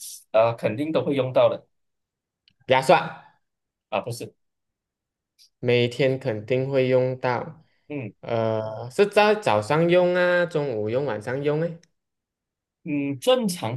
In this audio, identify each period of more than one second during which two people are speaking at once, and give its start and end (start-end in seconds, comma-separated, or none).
none